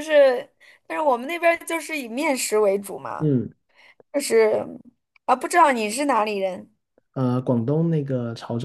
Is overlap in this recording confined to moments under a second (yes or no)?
yes